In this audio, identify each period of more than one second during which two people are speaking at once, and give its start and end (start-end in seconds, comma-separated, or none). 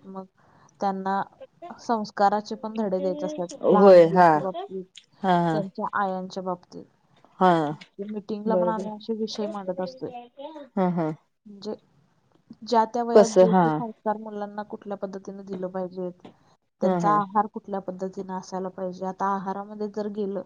none